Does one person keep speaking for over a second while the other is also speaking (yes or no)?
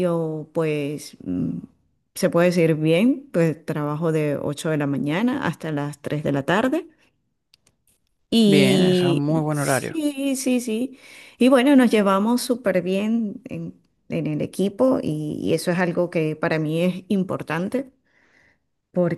yes